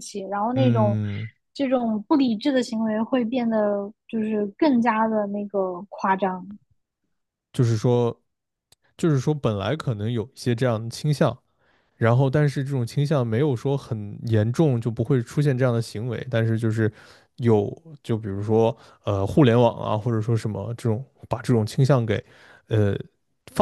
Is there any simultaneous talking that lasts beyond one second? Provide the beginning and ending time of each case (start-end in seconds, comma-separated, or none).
none